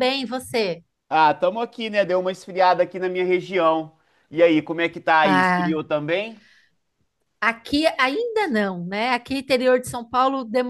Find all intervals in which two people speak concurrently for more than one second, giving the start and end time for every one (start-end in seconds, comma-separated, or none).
none